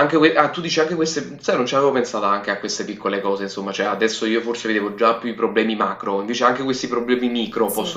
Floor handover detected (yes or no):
yes